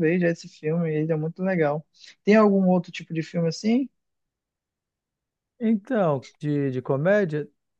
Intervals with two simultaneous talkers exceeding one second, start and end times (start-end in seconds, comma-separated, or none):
none